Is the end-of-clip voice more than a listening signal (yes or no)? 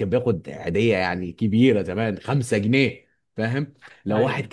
no